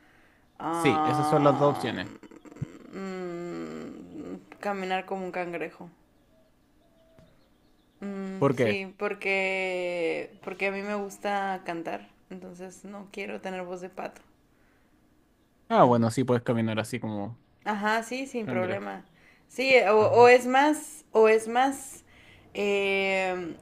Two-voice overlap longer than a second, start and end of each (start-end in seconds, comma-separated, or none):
0.7-1.9